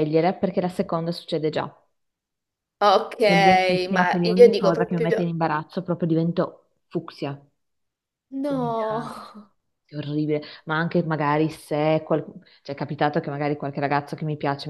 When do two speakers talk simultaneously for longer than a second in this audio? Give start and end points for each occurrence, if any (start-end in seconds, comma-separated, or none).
3.9-5.3